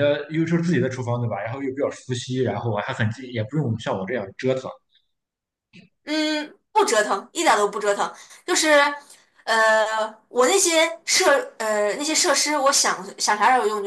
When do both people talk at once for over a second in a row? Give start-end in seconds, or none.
none